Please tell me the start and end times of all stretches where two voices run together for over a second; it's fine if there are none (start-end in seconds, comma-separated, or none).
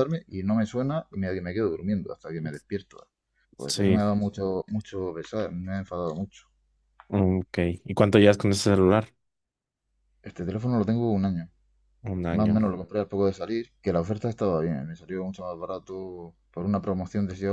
none